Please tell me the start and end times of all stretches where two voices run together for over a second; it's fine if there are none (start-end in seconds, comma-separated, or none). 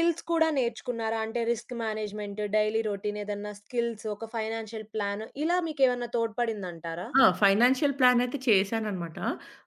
none